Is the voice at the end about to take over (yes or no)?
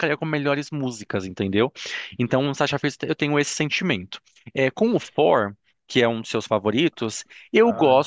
no